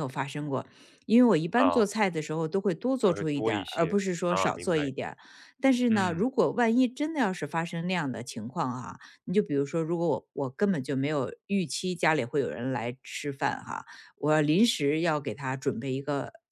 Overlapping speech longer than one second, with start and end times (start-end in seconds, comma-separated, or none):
3.1-4.9